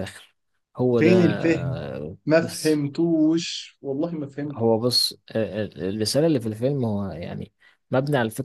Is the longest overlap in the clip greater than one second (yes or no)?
no